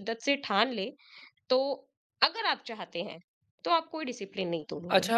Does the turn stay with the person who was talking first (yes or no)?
no